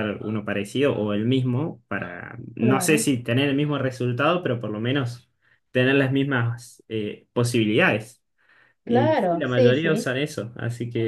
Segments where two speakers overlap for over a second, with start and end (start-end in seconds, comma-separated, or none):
8.8-10.1